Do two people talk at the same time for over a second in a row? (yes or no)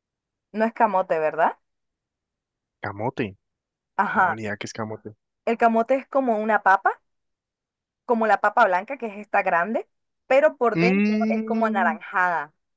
yes